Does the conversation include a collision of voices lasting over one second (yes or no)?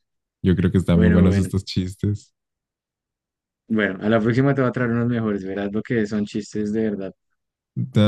no